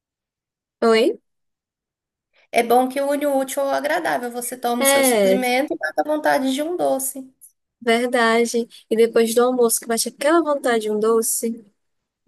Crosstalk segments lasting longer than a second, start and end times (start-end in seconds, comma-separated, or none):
none